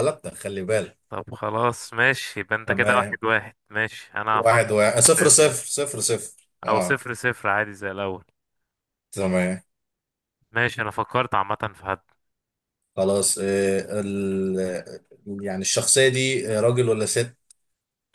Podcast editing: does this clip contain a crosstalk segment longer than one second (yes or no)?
yes